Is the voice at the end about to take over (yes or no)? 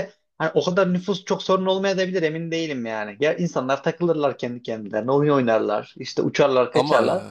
no